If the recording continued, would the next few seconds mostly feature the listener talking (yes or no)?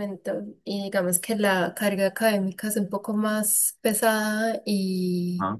no